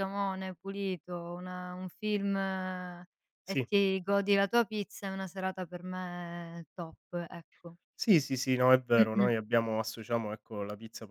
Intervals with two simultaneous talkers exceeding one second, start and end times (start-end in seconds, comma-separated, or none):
none